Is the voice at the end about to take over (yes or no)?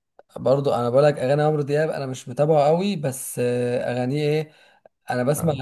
no